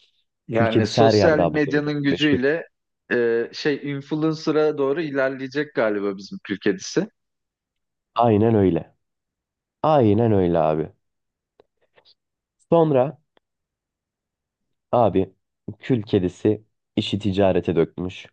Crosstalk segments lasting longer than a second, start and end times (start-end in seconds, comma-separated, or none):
0.5-2.4